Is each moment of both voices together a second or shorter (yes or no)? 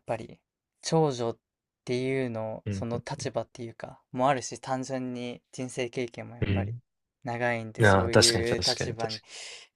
no